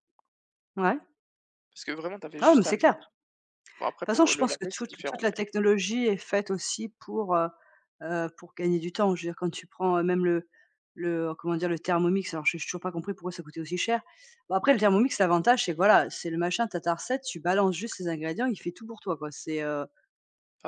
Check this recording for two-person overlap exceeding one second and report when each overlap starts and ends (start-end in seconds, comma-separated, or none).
4.0-5.2